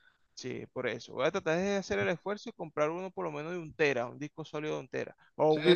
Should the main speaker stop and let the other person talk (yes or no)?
yes